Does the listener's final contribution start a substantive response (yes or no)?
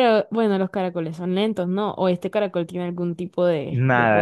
yes